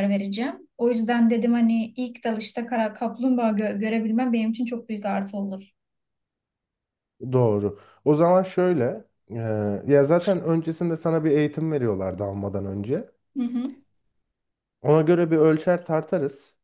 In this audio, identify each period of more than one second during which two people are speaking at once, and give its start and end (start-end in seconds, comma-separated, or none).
none